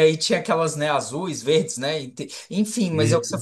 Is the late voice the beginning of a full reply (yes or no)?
no